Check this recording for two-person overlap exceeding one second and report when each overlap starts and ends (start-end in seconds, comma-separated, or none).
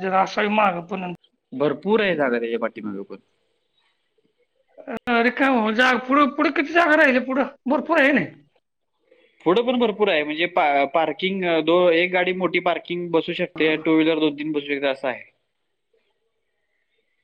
none